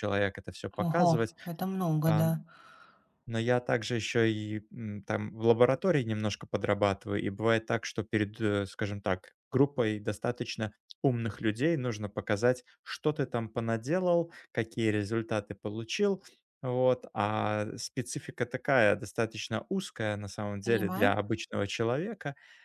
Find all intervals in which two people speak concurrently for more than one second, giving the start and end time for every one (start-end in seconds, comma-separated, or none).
none